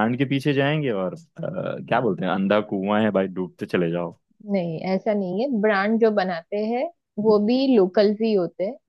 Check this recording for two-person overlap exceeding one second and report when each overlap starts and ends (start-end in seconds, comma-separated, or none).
none